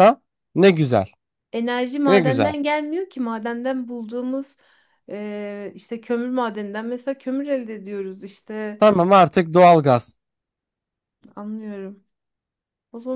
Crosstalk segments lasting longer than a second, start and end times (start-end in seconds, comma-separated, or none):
none